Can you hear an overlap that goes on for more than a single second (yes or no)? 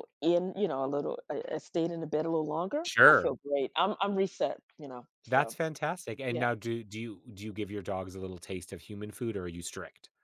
no